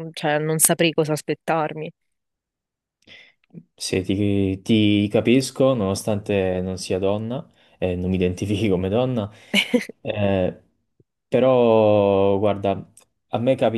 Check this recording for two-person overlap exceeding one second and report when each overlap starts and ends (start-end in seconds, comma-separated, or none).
none